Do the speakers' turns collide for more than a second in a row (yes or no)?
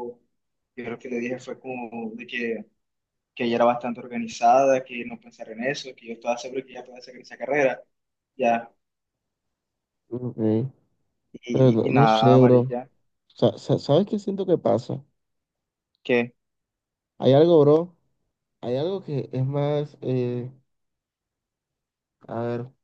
yes